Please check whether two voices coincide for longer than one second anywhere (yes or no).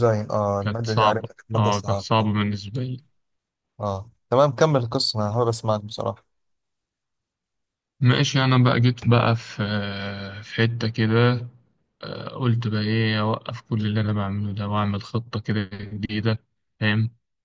yes